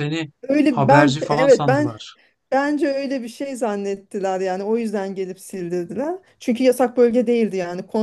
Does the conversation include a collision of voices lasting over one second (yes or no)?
yes